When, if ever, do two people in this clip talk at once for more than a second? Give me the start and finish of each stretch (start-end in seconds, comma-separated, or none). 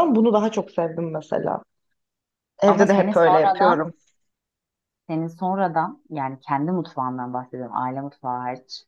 2.7-3.9